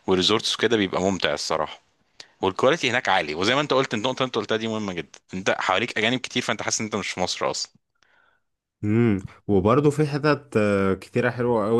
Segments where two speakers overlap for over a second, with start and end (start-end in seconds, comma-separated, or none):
none